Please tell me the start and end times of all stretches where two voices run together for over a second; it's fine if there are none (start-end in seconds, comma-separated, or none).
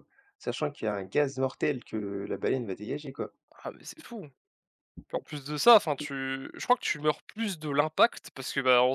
none